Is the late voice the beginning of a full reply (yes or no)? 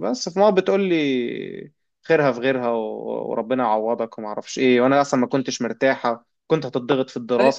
no